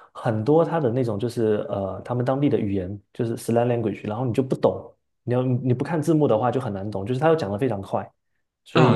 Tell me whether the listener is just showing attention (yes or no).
no